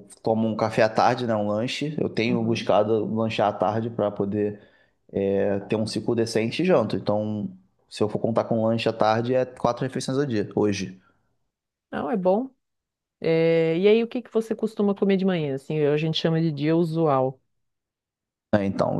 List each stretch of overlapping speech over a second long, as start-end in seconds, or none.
none